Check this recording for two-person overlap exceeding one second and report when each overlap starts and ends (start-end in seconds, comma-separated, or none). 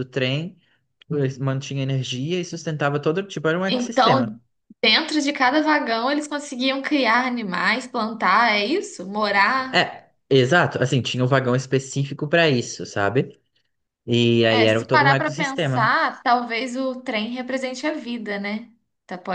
14.4-15.9